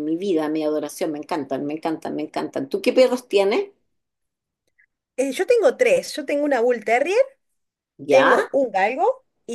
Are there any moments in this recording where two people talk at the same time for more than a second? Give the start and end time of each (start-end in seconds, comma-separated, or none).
none